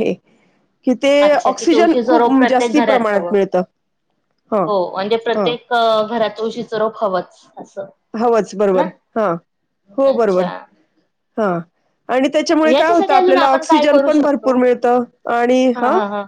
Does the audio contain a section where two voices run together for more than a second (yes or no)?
yes